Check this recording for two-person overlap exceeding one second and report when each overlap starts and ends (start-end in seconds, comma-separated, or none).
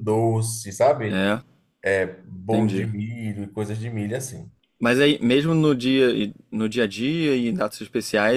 none